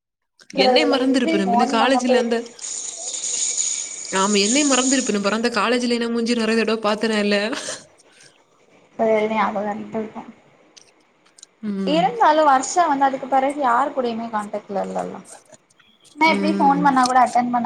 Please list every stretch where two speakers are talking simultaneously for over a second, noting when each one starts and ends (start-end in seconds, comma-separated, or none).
0.7-2.2